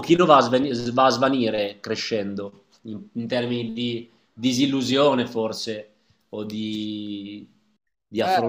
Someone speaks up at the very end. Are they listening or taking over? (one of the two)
taking over